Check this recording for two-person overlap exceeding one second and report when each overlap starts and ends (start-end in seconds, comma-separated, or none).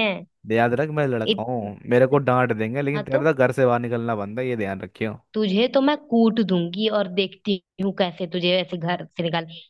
none